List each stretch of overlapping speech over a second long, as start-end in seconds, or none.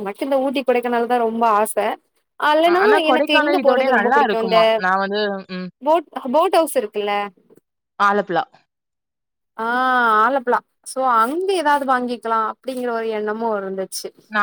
2.8-4.6